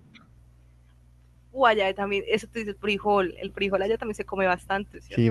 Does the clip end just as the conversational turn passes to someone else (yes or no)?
yes